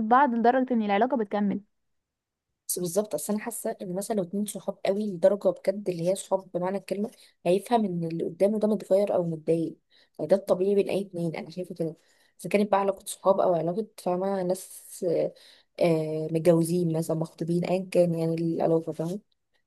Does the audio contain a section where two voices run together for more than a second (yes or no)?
no